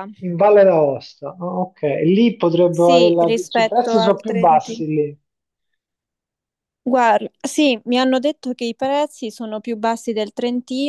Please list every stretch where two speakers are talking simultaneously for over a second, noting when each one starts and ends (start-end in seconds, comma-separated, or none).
2.7-4.8